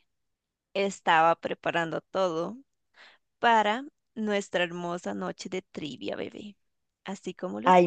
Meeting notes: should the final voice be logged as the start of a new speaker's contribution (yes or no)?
yes